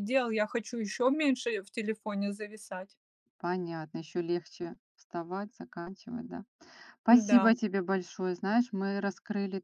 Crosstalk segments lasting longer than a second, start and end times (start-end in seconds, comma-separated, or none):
none